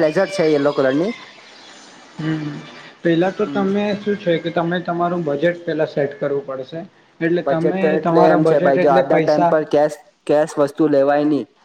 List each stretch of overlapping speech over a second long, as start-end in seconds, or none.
7.4-9.5